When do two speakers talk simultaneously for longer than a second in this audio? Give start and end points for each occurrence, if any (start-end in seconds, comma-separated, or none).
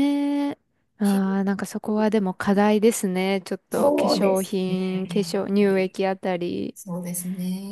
3.7-6.0